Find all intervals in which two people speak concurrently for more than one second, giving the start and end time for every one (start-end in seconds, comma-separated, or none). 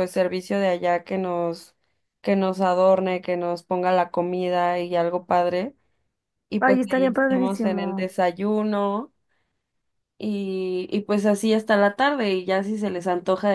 6.6-8.1